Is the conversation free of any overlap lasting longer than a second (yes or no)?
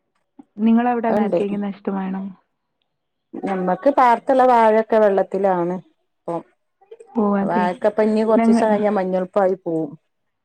yes